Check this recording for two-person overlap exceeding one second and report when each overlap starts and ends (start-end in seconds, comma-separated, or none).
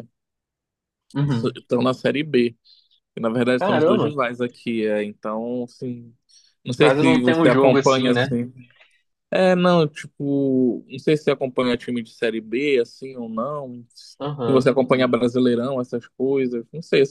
6.8-8.3